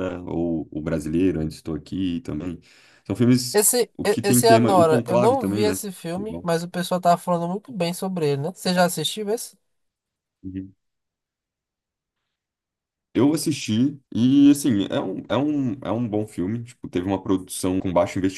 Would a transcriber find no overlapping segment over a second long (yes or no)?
no